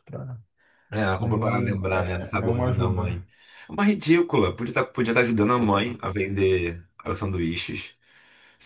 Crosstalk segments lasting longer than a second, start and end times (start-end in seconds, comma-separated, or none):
1.2-3.2